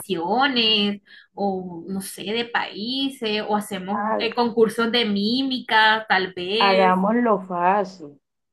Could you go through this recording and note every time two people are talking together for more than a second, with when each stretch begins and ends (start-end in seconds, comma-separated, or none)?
none